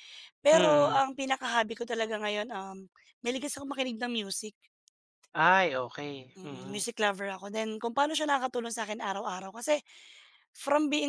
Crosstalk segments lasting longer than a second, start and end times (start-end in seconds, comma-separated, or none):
none